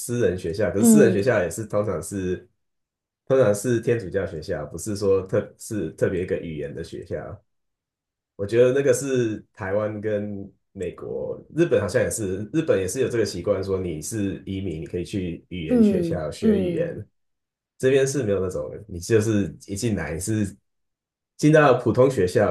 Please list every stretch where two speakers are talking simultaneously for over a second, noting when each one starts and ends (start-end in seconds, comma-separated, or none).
15.7-16.9